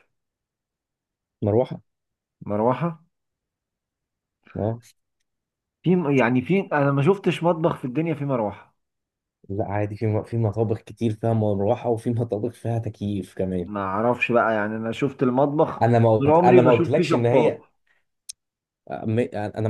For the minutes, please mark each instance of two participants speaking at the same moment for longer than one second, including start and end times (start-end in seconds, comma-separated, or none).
16.2-17.6